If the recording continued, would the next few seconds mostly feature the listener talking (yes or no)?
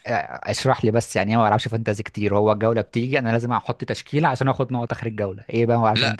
yes